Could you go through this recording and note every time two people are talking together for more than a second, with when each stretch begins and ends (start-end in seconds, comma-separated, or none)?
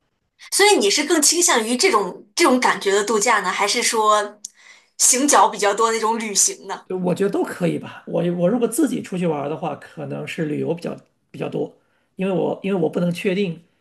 none